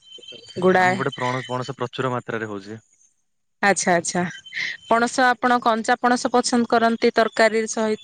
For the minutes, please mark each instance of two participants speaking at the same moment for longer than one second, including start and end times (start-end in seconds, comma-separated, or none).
none